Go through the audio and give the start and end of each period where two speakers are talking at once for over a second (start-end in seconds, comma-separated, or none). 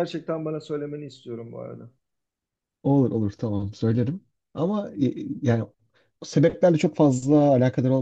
none